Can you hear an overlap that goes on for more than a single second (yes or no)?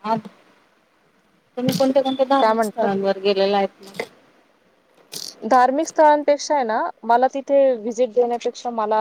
no